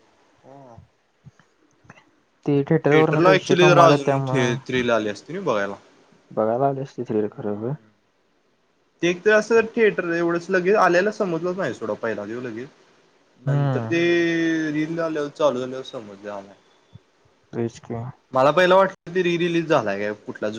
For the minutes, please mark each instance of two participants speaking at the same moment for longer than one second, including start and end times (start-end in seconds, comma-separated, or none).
2.9-4.2